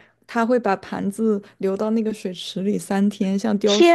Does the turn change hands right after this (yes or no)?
yes